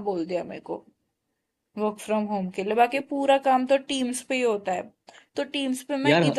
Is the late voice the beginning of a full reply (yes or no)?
no